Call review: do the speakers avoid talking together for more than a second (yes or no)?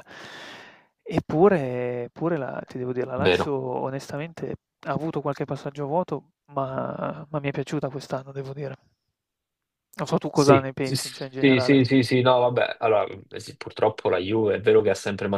no